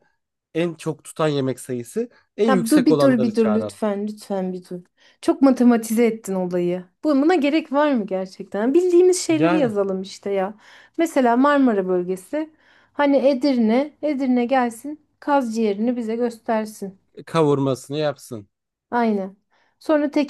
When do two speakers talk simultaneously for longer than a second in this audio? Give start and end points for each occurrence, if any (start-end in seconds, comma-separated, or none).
2.5-3.8